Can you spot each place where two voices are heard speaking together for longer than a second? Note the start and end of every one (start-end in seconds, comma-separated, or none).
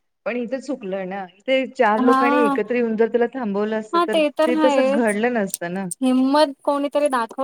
none